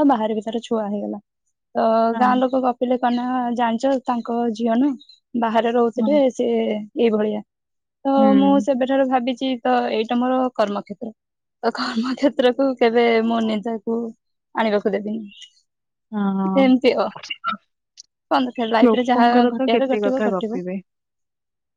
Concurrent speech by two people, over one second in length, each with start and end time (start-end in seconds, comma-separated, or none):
18.8-20.6